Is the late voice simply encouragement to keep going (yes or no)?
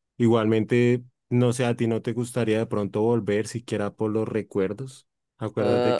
no